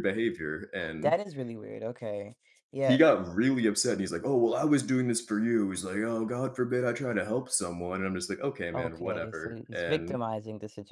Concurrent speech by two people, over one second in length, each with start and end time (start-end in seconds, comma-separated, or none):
8.7-10.2